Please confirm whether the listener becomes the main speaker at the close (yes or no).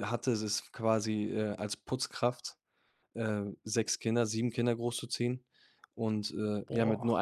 no